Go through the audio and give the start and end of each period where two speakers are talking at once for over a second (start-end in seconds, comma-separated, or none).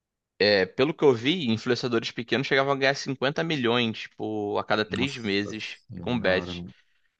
4.9-6.5